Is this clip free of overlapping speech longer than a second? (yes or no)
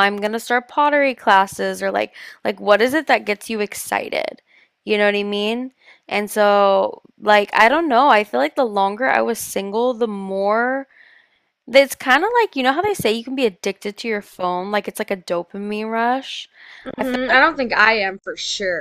yes